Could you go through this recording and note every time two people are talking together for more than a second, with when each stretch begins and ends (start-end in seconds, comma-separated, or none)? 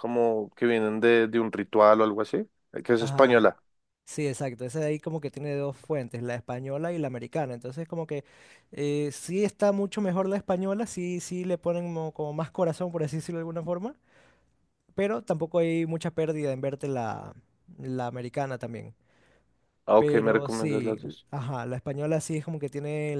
20.0-21.2